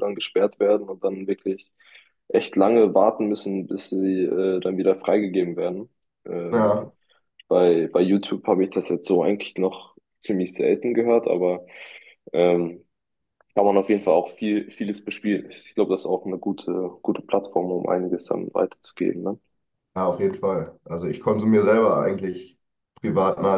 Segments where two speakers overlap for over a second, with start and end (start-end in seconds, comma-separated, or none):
none